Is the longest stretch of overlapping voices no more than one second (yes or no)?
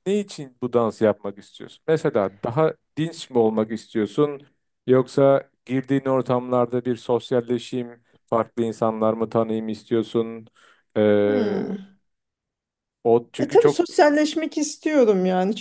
yes